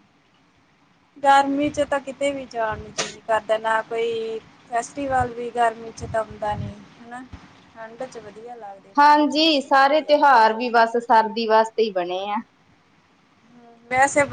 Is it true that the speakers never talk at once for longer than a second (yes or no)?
yes